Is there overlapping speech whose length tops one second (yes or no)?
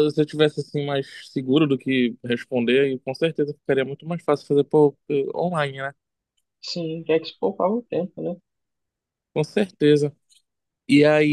no